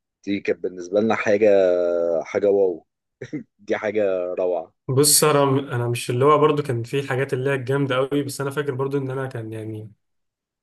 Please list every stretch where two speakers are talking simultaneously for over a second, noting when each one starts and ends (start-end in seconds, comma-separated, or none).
none